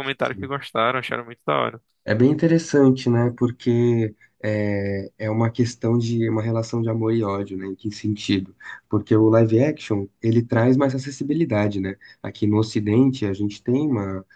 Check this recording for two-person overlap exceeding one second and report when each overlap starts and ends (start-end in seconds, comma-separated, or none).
none